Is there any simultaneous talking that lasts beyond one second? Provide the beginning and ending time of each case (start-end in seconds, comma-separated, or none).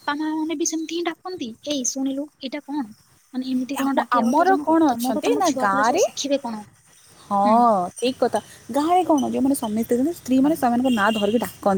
3.8-6.1